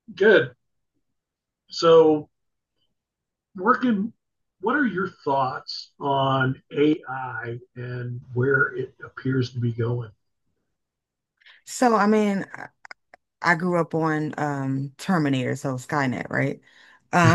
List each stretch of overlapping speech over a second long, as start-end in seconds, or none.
none